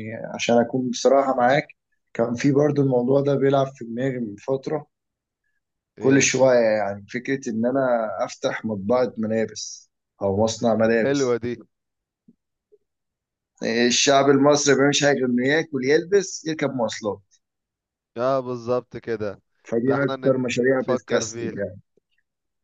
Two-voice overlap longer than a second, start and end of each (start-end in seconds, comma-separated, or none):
19.9-21.6